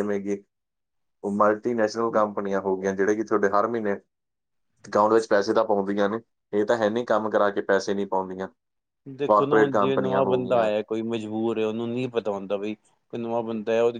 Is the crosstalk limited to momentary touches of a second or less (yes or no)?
no